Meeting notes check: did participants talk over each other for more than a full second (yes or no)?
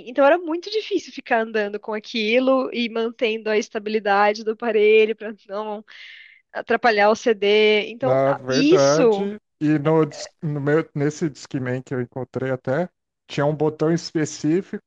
yes